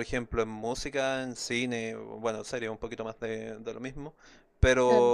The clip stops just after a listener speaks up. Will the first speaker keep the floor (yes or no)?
yes